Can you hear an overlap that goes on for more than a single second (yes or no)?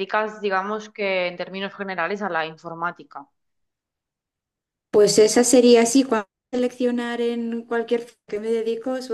no